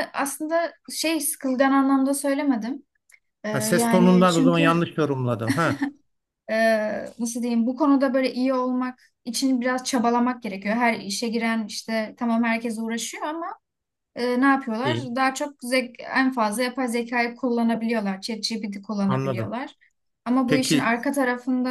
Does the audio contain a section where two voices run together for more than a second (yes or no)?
yes